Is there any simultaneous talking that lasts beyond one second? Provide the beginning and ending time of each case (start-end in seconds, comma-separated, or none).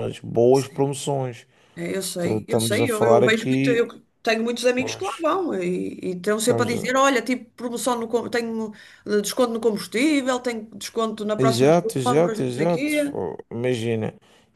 2.2-3.9, 11.4-13.2